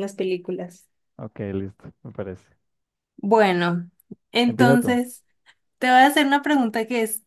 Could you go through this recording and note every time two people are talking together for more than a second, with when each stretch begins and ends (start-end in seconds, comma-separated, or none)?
none